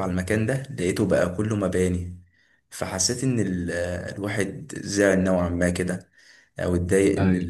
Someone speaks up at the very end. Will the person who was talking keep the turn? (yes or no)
yes